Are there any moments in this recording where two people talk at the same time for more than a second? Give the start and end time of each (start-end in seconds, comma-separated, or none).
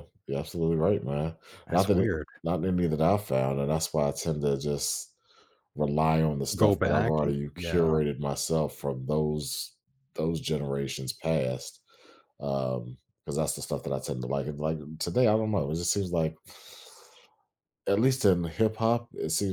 6.6-8.0